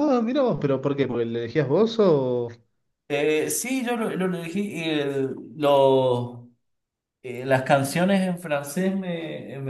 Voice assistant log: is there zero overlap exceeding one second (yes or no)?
yes